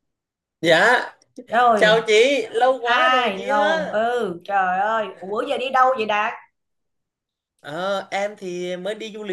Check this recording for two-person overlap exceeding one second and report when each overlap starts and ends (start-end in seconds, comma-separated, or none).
2.8-4.0